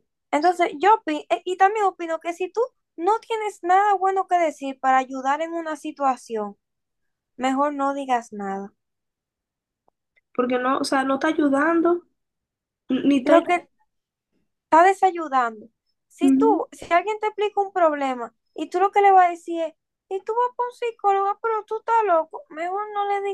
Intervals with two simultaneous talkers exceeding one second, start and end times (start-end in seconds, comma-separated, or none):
none